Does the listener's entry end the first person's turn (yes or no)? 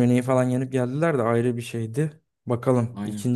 no